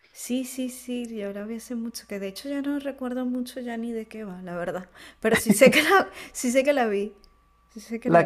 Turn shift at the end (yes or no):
yes